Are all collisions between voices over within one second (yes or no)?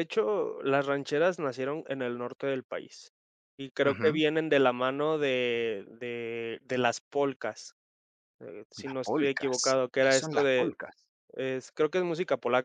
no